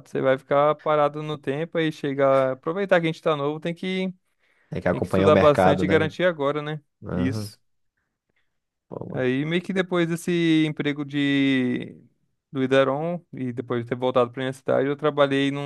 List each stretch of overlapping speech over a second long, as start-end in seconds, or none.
4.9-6.2